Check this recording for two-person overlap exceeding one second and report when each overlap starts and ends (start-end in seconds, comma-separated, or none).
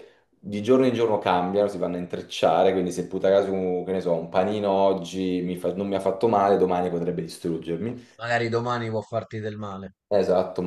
none